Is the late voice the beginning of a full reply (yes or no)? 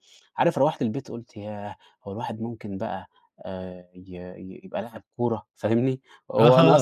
yes